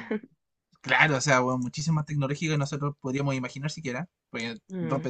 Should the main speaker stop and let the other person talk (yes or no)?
no